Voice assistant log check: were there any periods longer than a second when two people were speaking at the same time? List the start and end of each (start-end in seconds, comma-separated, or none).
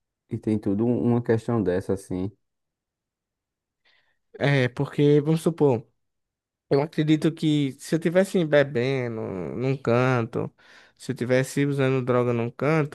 none